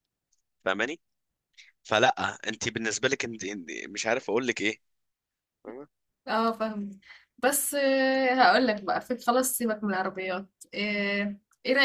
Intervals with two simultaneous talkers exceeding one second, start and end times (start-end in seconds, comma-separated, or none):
none